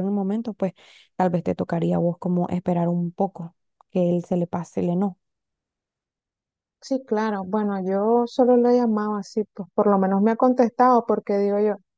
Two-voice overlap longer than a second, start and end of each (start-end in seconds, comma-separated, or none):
none